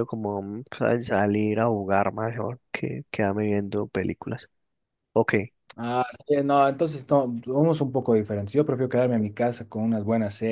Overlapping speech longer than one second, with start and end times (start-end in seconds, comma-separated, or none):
none